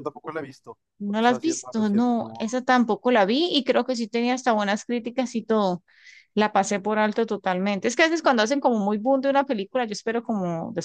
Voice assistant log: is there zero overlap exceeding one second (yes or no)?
no